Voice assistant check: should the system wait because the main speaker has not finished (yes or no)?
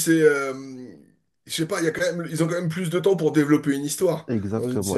no